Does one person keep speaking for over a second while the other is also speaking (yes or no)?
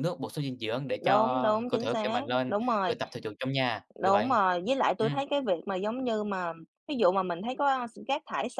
yes